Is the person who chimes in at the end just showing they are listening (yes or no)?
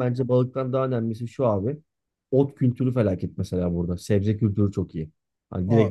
yes